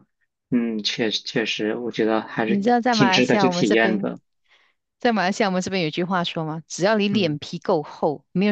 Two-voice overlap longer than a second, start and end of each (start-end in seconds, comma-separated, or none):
2.4-4.1